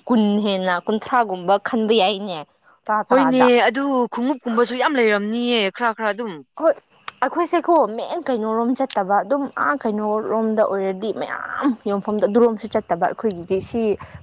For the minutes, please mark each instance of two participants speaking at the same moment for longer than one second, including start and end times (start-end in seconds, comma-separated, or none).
none